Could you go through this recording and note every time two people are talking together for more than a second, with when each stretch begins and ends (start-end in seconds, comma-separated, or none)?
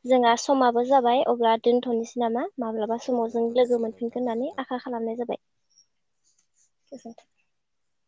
3.1-4.8